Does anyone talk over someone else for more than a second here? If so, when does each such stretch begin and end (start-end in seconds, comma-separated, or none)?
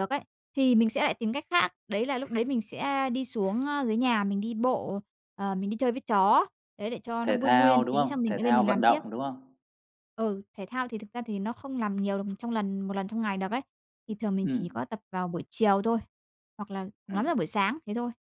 7.2-9.0